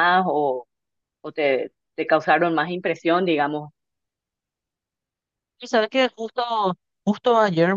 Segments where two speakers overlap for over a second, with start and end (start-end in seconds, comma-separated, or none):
none